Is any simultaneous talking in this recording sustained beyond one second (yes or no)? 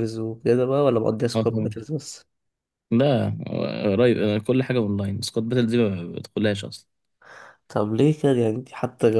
no